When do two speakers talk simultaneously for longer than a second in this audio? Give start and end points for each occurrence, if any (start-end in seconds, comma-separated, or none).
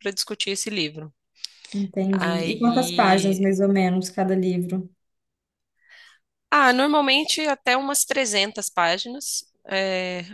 2.1-3.5